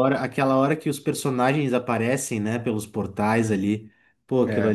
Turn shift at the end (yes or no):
no